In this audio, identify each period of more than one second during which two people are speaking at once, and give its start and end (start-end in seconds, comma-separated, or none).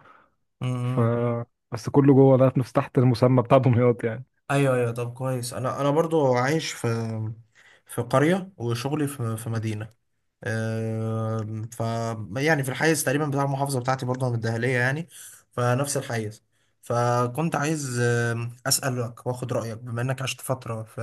none